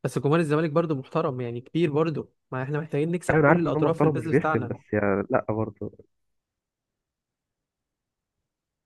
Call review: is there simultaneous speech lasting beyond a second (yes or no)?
yes